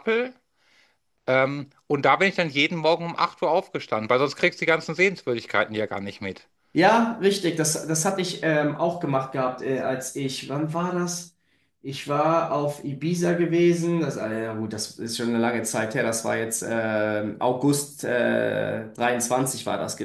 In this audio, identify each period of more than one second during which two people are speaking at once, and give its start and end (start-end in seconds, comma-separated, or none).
none